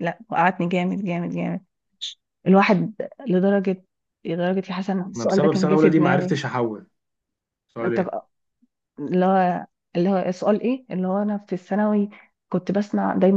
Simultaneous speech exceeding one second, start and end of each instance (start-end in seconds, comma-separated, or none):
5.2-6.4